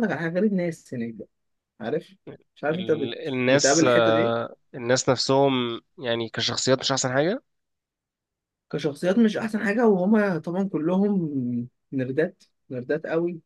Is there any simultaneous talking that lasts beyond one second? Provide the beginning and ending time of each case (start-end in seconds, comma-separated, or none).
2.7-4.4